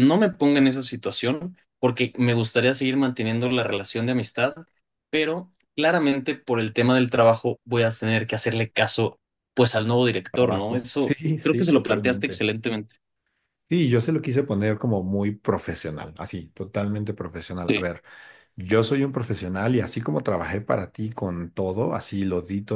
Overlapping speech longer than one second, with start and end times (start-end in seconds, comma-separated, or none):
10.3-12.4